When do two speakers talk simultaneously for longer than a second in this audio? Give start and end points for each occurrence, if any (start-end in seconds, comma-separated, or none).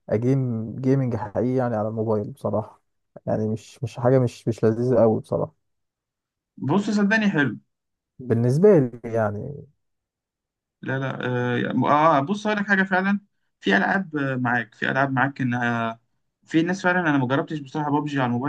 none